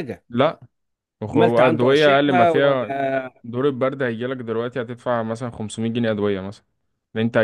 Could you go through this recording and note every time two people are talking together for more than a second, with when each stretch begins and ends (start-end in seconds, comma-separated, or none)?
1.3-2.9